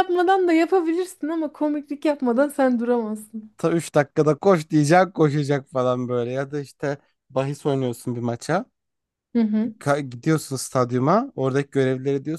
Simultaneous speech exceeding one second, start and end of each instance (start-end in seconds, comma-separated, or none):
none